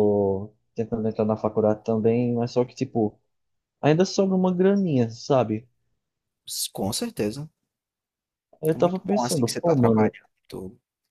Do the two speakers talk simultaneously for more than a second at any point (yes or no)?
yes